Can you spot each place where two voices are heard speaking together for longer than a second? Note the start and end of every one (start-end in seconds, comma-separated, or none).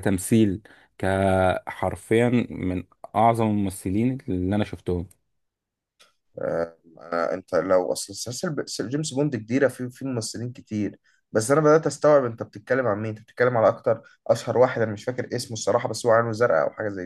none